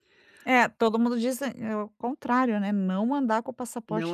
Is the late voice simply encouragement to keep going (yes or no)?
no